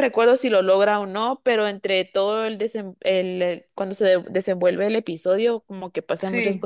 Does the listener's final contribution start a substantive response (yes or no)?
no